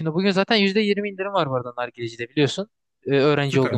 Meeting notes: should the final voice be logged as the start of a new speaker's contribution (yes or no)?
yes